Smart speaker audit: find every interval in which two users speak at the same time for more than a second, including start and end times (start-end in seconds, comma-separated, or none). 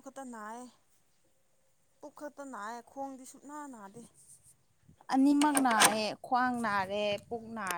none